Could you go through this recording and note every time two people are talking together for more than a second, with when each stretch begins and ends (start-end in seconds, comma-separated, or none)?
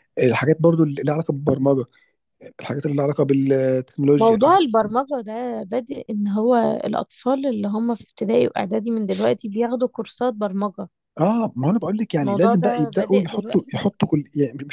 12.2-13.8